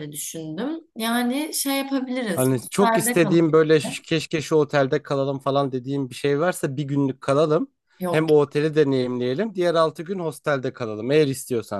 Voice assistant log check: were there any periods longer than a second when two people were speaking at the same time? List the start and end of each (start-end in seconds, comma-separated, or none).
2.3-3.7